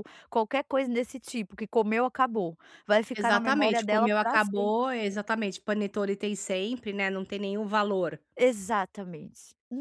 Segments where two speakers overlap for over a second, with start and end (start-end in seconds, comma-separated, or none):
3.1-4.7